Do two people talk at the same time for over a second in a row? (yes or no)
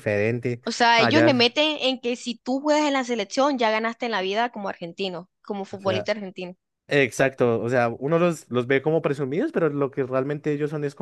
no